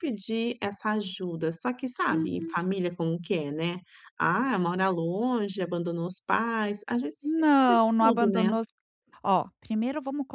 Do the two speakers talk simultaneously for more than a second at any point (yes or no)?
yes